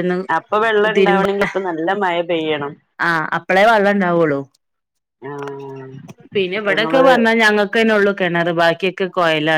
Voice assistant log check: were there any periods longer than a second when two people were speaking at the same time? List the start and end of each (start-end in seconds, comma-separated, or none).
none